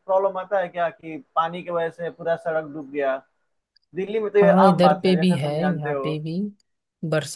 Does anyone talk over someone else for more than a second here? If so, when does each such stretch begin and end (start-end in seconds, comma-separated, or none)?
4.4-6.1